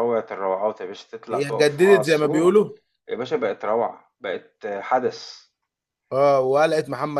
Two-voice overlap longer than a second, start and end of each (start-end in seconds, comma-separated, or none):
1.3-2.5